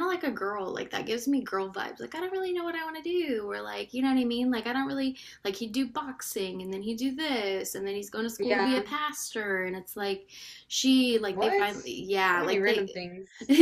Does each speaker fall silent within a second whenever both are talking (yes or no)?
no